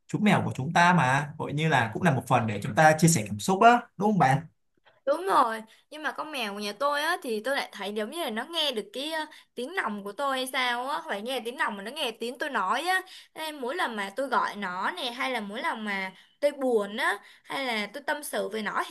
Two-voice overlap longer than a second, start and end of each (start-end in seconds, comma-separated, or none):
none